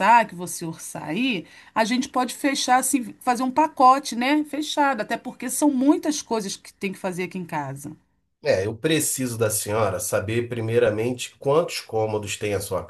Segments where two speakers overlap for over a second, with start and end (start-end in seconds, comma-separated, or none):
none